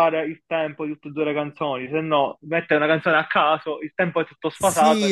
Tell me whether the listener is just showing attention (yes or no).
no